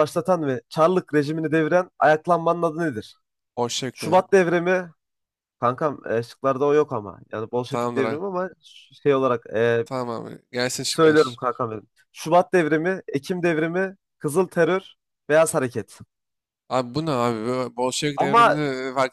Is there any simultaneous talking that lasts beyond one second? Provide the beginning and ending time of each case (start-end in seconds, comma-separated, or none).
none